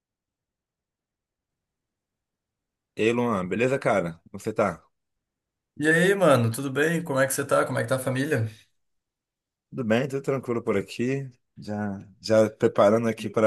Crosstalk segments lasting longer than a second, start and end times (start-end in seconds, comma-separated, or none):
none